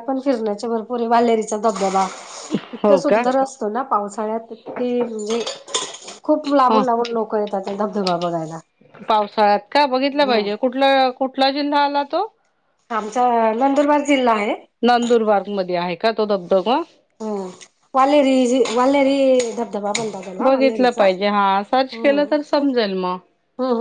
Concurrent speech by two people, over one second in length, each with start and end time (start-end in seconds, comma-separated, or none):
20.4-22.7